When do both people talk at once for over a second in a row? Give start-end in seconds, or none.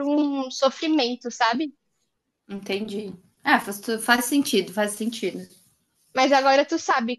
none